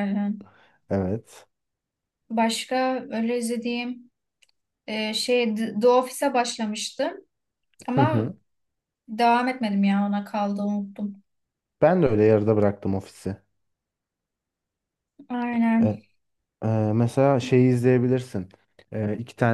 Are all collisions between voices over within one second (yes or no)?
yes